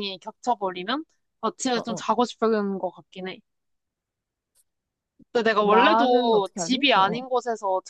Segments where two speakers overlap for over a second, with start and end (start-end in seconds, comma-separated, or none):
5.6-7.2